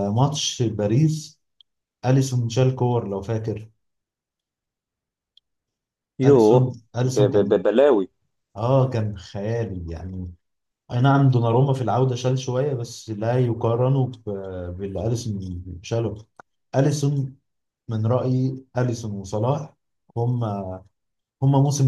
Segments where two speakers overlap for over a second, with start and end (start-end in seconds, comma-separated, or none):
6.2-7.6